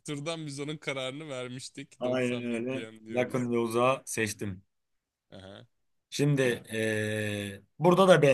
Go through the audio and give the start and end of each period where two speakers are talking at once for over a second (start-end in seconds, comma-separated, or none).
2.0-3.5